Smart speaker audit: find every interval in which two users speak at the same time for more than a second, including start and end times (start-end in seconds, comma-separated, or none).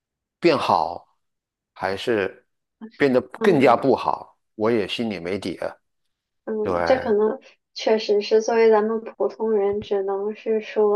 none